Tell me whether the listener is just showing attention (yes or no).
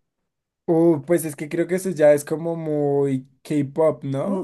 no